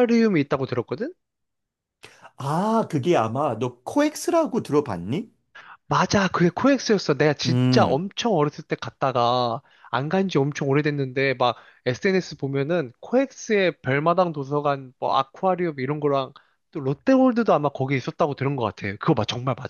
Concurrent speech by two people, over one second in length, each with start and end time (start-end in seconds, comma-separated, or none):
none